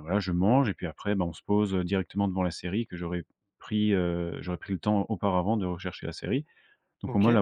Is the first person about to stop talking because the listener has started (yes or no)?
no